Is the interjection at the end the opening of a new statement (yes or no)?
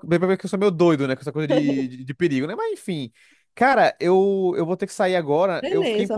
no